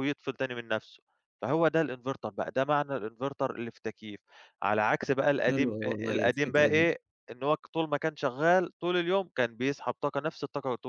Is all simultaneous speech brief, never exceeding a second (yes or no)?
no